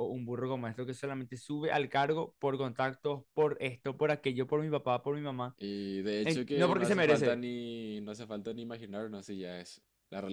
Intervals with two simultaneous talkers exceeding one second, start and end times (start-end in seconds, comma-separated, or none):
6.2-7.4